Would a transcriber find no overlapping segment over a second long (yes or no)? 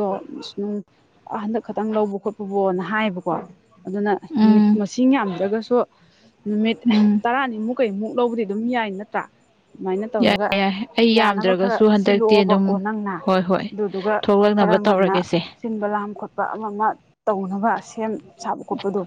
no